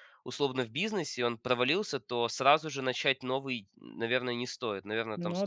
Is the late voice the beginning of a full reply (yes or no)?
no